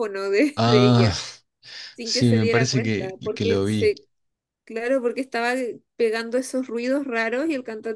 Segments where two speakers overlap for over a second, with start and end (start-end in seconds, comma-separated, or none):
2.0-3.9